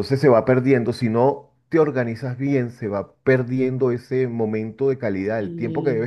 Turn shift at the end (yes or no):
no